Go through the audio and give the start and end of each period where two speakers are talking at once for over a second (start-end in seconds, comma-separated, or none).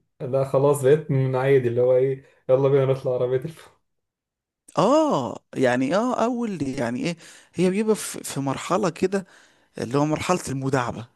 none